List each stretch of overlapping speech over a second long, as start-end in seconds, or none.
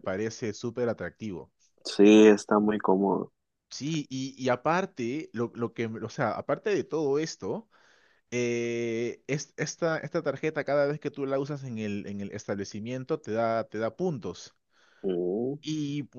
none